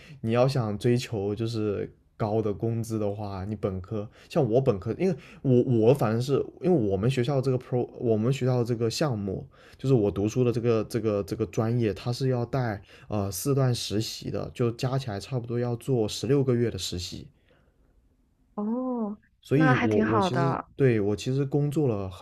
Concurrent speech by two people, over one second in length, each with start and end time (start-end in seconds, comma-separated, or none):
19.4-20.7